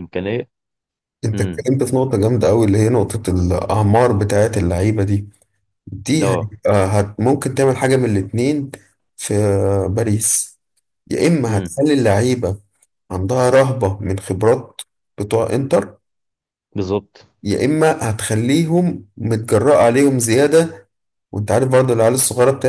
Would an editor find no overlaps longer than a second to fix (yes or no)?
yes